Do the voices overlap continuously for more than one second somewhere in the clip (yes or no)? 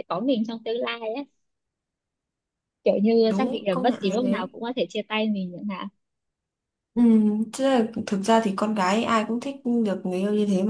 yes